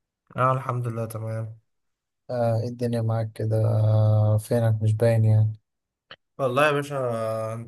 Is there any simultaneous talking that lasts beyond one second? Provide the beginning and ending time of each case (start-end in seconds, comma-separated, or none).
none